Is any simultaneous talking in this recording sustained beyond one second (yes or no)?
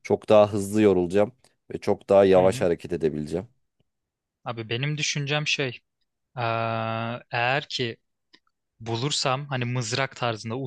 no